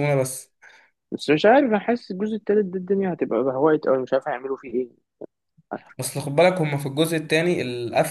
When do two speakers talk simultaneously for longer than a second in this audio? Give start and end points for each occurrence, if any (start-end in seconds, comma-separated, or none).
none